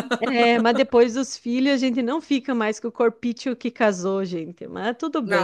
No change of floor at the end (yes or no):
no